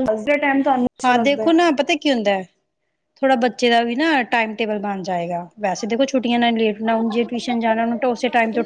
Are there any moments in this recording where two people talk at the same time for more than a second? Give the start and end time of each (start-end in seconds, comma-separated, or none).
none